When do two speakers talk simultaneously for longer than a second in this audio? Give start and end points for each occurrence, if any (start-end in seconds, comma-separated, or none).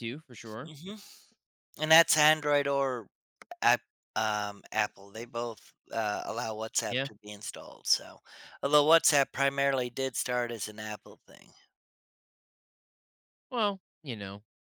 none